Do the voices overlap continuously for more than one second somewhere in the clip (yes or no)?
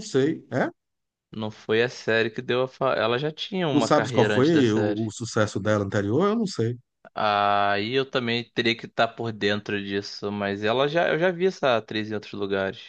yes